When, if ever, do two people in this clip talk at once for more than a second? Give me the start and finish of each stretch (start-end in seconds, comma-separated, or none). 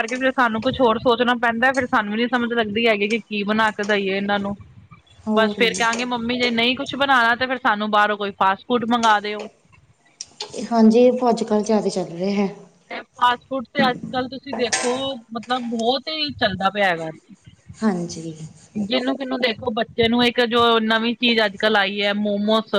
none